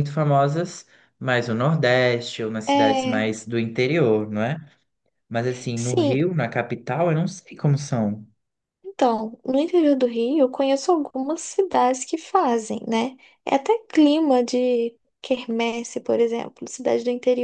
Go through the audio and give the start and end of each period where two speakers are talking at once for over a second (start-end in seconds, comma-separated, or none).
none